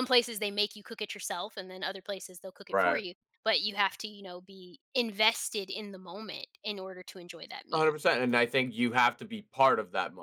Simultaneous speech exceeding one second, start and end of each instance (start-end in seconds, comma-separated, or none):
none